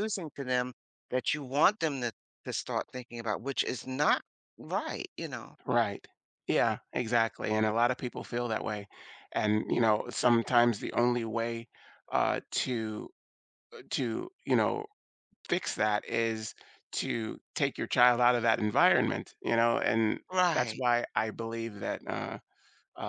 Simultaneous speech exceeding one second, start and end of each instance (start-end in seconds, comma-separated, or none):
none